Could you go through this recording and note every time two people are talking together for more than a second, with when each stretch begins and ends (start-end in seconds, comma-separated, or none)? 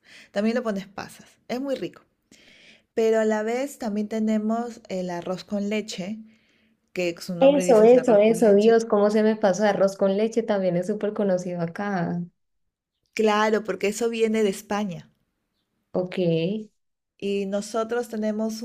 7.4-8.7